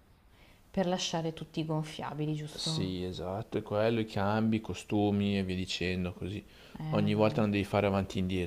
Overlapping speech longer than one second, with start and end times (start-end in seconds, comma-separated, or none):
none